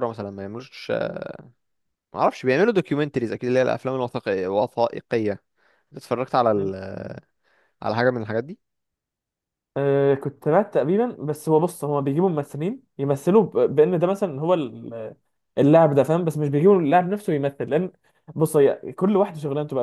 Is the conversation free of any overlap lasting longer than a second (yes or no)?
yes